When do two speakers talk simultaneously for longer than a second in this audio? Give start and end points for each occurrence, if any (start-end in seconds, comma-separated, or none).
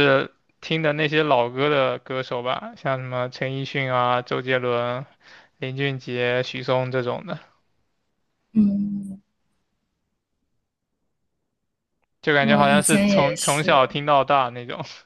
12.4-13.8